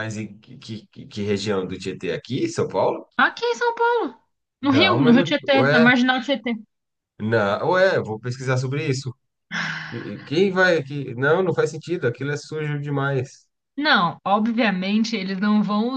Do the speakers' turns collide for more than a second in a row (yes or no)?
yes